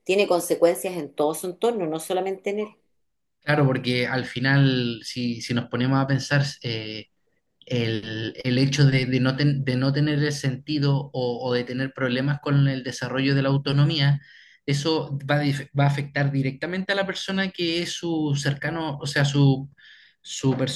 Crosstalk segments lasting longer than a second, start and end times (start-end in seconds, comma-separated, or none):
none